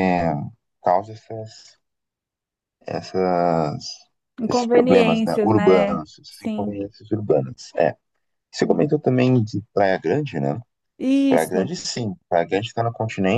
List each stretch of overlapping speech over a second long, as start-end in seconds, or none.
4.5-6.8